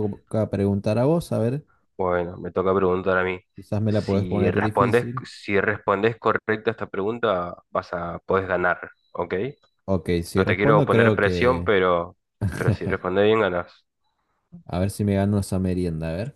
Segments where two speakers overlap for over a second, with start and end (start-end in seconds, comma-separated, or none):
3.9-5.2, 10.3-11.7